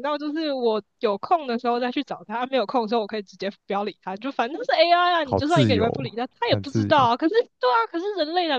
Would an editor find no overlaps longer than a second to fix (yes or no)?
no